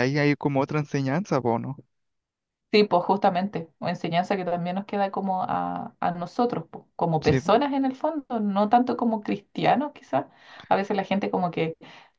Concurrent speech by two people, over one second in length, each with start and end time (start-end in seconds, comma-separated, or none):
none